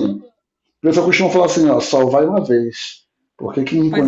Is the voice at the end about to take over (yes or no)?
no